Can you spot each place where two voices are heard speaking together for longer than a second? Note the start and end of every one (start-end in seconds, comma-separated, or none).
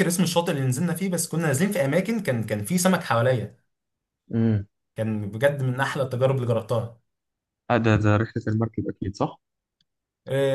none